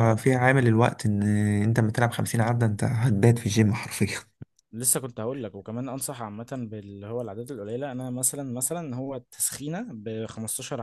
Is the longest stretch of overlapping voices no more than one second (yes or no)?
yes